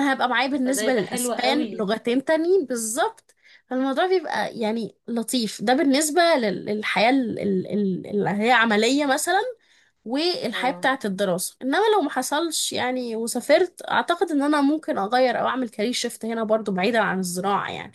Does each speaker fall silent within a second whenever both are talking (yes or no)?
no